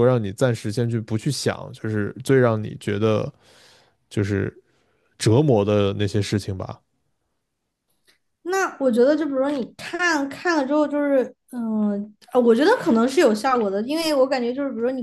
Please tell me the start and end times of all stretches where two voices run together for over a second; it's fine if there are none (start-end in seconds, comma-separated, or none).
none